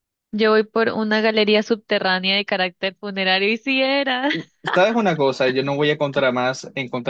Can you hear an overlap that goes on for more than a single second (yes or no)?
no